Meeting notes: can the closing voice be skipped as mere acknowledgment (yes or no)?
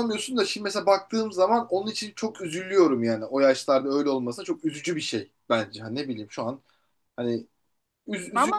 no